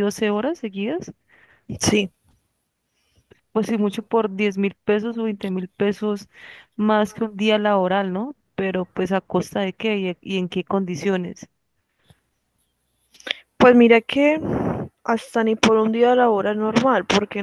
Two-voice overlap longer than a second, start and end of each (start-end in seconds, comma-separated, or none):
none